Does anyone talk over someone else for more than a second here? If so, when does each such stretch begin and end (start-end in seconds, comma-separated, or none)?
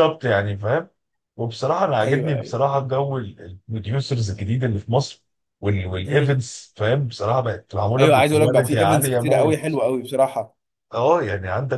8.0-9.8